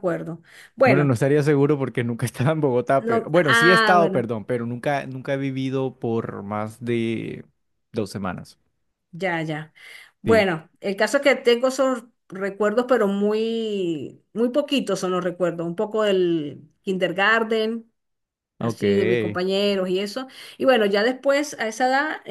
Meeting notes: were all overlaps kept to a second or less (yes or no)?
no